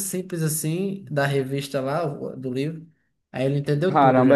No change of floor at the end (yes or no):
no